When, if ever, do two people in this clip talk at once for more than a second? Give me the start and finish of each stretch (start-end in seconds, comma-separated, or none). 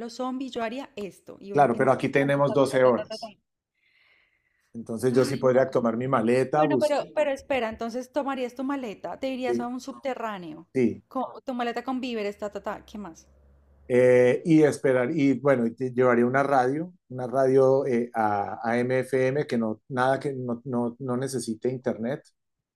1.5-3.3